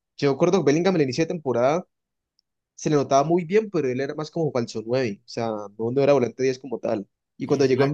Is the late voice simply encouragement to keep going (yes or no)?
yes